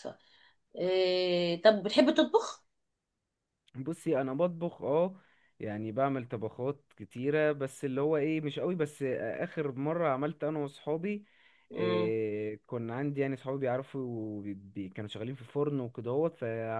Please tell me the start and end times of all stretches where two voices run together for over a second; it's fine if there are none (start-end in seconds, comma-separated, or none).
none